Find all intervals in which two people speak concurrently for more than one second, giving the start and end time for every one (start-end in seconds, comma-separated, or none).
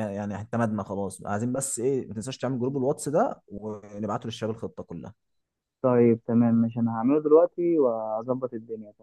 none